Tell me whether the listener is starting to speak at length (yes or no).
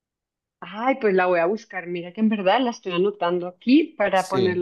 no